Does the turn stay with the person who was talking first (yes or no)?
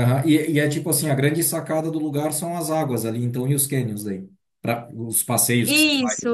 no